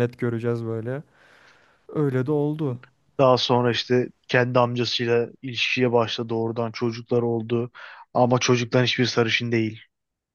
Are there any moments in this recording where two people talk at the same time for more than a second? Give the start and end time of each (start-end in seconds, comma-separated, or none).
none